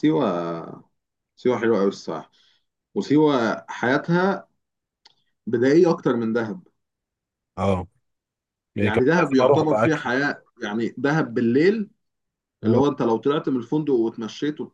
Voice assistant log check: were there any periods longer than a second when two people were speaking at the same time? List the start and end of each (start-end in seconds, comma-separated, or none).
8.8-10.0